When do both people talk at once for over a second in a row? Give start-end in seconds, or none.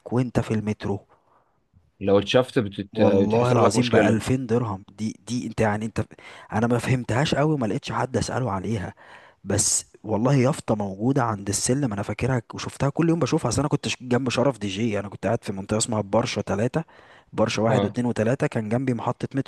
2.9-4.2